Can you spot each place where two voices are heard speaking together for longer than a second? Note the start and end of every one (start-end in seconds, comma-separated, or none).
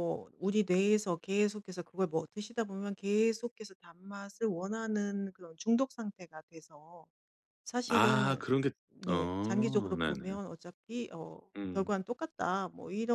9.1-10.4